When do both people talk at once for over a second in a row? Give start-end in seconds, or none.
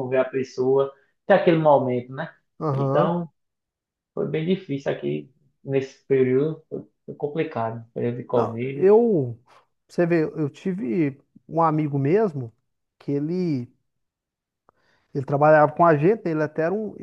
none